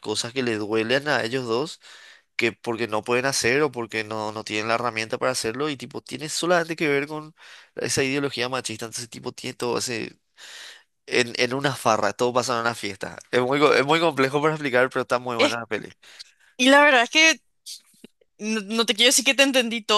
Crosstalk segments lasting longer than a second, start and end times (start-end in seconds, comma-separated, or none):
none